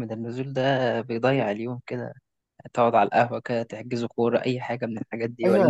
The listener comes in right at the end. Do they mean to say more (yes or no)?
yes